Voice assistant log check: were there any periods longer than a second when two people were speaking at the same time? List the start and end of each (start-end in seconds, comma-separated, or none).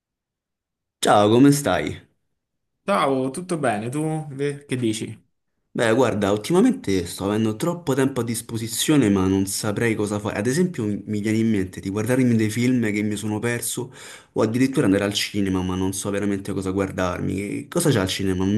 none